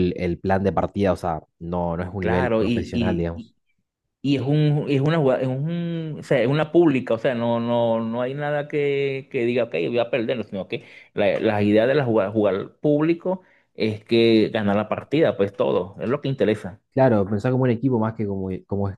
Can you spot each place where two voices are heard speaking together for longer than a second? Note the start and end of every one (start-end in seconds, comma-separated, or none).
2.2-3.5